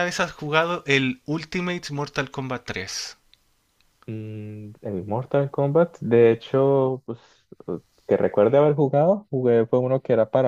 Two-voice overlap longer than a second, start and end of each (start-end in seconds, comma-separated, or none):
none